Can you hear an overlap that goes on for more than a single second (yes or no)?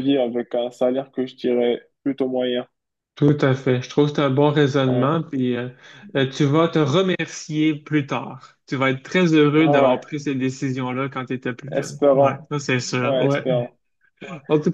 yes